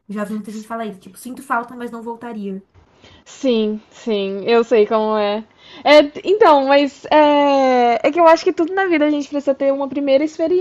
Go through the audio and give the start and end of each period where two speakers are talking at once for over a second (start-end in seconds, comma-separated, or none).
none